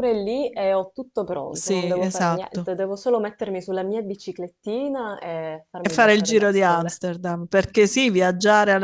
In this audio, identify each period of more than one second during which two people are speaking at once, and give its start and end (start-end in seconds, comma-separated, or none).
1.5-2.7, 5.8-7.0